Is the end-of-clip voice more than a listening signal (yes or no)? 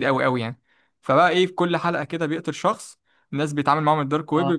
no